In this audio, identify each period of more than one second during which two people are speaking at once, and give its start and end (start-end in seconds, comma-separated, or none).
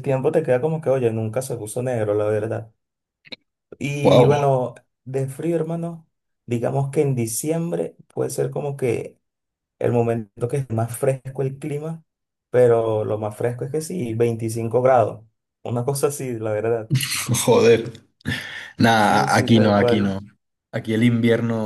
19.0-20.2